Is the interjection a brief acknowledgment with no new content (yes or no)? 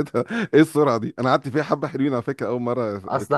no